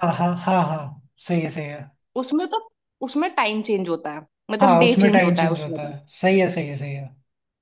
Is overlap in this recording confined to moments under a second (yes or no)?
no